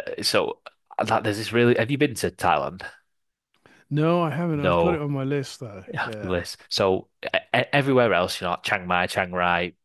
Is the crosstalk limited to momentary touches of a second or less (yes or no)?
yes